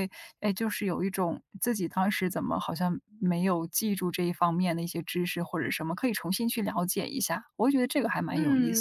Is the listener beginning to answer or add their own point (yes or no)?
yes